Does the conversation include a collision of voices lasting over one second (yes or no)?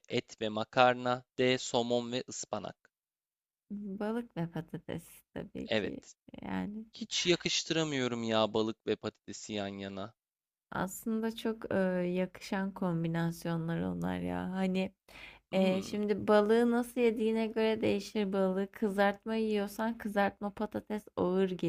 no